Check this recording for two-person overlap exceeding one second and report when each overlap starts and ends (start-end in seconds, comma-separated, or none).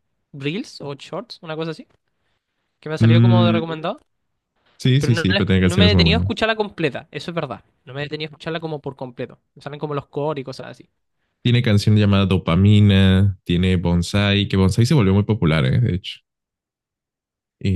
5.0-6.4